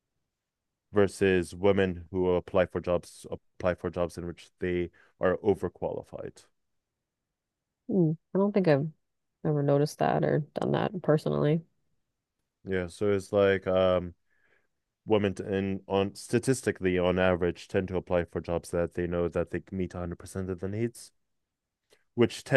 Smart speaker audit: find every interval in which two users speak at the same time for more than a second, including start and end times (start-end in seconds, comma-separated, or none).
none